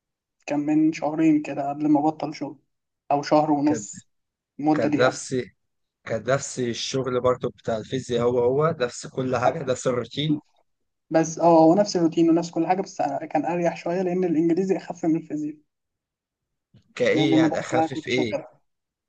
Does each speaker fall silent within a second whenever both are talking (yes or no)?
no